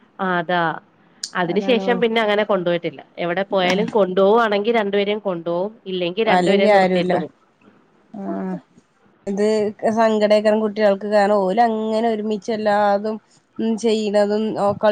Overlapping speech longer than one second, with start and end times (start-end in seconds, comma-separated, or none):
none